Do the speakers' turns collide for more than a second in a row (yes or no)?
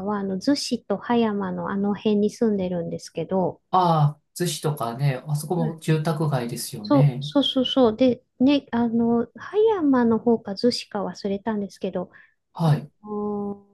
no